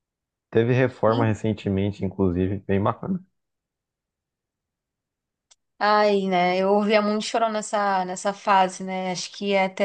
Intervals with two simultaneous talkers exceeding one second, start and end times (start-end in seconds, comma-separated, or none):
none